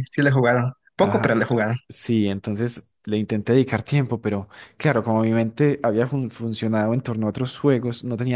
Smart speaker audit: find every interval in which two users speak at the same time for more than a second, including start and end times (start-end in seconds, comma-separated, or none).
none